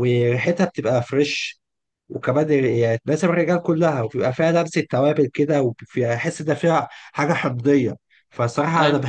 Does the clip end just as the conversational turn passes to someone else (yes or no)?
no